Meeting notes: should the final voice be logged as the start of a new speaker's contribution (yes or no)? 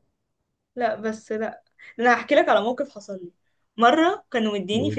no